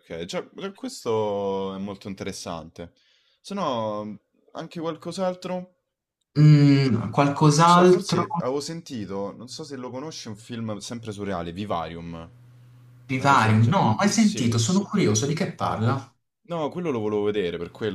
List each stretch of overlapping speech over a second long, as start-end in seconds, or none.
13.2-14.6